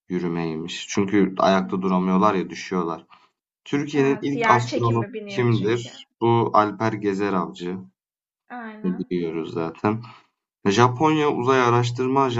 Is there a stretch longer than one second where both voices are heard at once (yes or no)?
yes